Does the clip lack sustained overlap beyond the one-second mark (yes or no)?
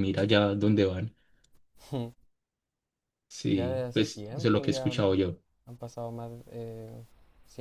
no